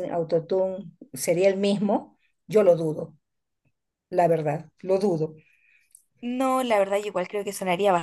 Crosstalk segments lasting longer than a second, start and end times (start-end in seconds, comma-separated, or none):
none